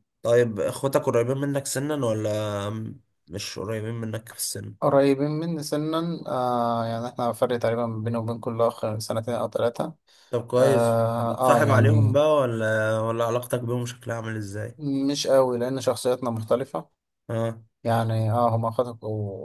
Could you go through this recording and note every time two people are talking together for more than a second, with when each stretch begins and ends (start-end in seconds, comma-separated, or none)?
10.6-12.2